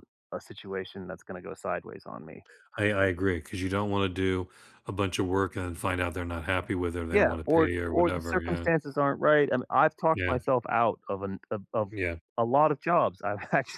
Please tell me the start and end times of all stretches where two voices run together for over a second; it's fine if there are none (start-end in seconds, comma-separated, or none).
7.1-8.7